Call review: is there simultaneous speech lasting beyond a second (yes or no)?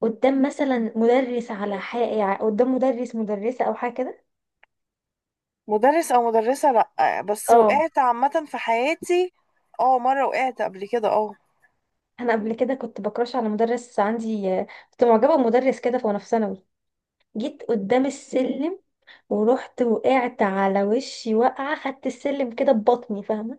no